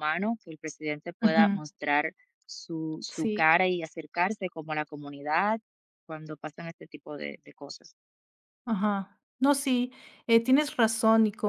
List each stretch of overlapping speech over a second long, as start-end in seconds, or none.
none